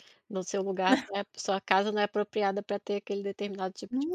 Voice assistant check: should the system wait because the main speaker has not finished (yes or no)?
no